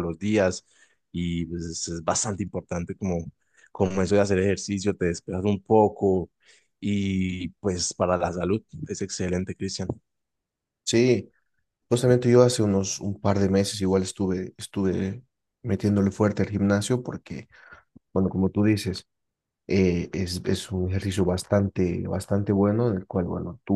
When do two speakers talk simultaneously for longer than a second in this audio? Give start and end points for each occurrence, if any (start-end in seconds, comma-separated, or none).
none